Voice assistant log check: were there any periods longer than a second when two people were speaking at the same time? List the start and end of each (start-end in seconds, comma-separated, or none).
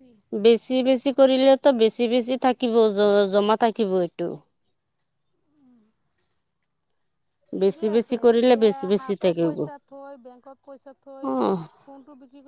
7.6-9.6